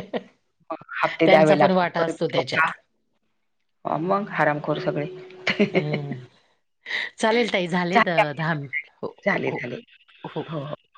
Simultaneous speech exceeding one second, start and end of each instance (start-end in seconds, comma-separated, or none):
1.3-2.7